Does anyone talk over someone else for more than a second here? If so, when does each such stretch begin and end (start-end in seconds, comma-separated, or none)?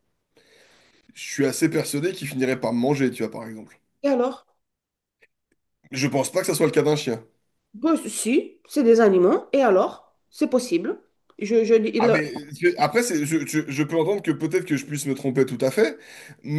none